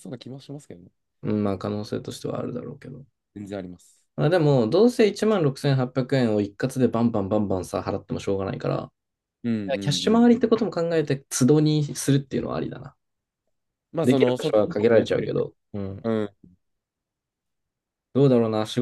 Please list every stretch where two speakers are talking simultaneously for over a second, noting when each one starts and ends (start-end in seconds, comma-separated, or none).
14.0-15.4